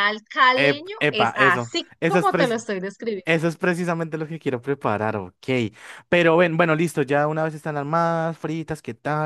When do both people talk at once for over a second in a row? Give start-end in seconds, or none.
0.5-2.6